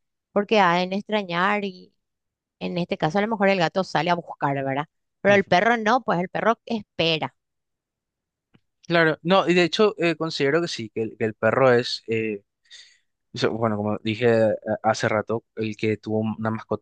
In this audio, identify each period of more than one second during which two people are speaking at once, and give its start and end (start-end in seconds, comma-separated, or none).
none